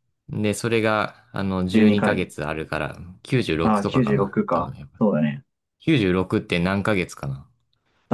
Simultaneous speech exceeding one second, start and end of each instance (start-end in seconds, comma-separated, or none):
3.6-5.0